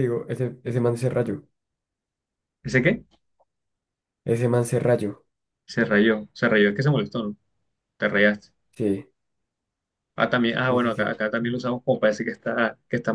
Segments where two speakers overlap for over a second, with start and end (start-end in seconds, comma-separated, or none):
none